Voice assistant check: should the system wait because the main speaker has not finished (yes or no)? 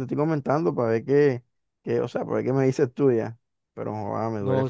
no